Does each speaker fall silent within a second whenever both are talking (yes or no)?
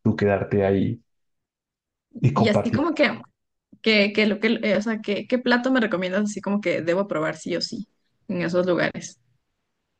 yes